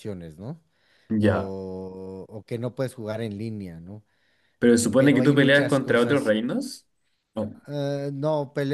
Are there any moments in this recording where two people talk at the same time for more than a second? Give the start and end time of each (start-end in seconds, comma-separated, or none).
5.0-6.3